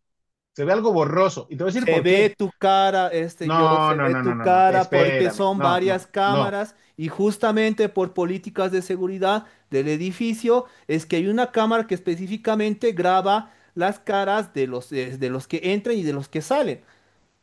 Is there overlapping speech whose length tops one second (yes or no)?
yes